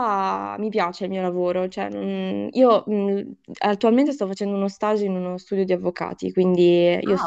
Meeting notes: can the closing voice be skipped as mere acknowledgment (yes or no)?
yes